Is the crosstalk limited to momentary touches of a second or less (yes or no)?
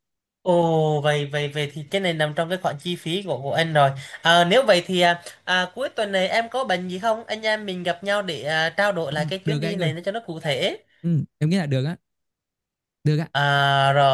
yes